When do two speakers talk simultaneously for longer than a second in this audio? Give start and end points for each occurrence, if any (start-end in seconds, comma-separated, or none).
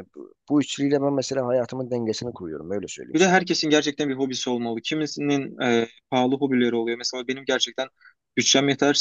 none